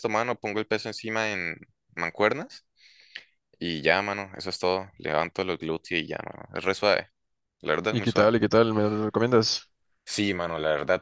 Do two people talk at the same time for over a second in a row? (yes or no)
no